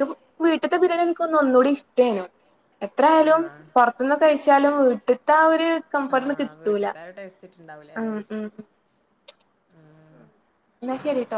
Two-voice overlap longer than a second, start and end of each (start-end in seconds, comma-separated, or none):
none